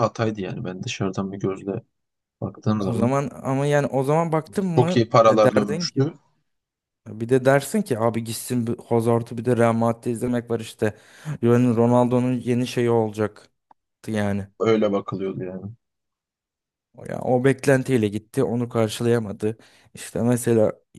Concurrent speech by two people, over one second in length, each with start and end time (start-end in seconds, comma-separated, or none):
4.7-6.1